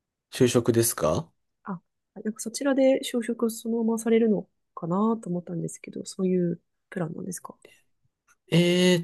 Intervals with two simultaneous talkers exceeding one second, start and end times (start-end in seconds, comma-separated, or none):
none